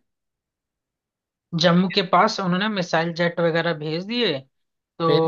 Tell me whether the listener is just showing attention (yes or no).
yes